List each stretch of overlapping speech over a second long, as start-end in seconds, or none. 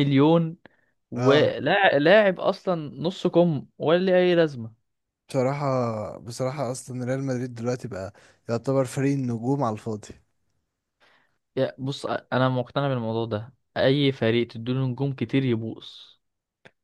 none